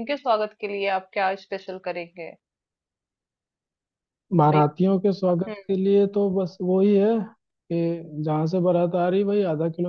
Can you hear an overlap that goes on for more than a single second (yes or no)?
no